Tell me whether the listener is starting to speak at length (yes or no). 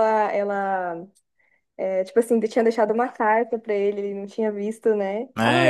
yes